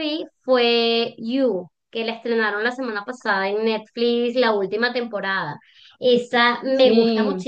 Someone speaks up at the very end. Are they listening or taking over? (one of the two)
listening